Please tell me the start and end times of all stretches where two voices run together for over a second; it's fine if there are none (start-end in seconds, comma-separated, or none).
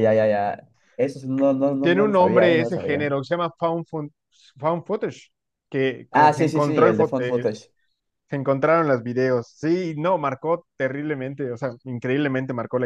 1.8-3.1, 6.1-7.5